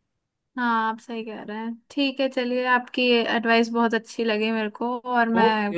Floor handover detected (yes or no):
yes